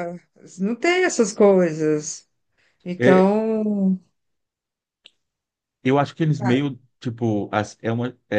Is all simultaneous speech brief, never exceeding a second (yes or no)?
yes